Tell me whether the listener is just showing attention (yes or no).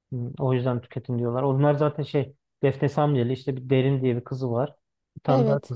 yes